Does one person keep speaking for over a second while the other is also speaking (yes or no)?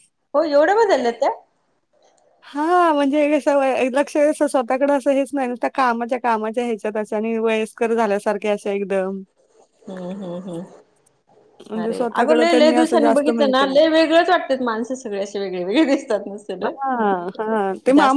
yes